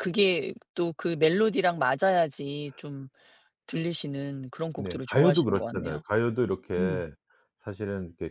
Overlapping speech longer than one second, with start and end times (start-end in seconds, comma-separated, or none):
4.8-6.0